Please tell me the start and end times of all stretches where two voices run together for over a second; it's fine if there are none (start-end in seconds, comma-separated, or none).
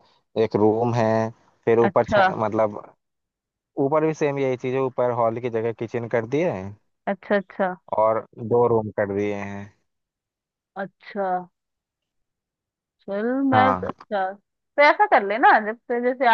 none